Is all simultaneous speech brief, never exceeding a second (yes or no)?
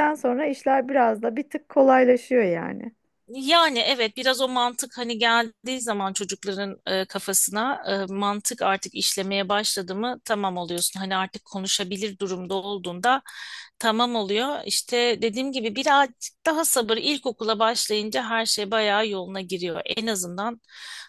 yes